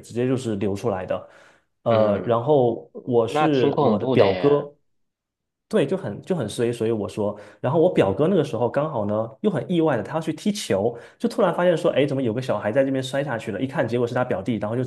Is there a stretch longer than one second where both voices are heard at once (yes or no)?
yes